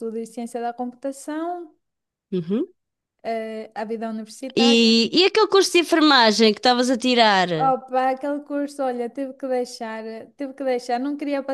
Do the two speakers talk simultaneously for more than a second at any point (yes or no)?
no